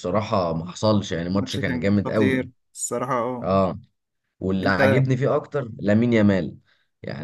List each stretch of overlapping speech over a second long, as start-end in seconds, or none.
1.3-2.5